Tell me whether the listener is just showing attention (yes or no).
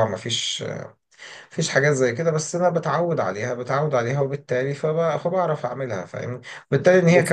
yes